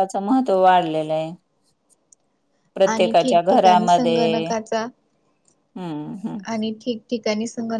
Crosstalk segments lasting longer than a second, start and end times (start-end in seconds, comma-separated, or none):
2.9-4.5